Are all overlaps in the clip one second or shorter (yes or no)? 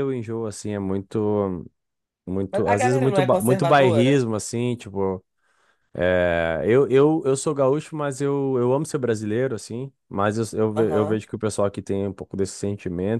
no